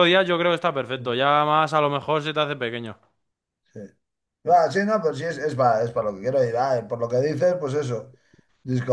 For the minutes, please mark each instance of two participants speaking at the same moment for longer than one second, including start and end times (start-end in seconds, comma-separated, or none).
none